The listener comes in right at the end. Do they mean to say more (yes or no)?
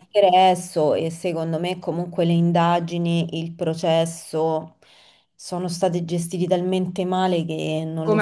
yes